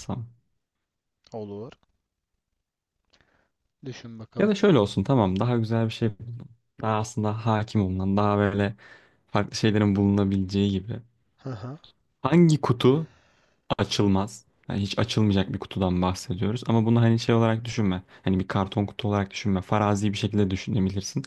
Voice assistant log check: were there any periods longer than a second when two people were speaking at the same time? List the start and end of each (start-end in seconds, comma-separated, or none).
none